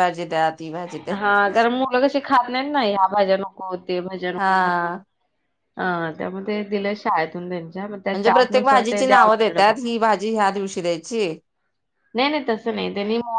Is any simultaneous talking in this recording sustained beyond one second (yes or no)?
yes